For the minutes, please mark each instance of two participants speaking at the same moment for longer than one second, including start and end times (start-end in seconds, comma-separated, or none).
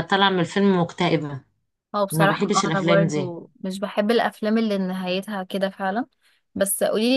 2.1-3.4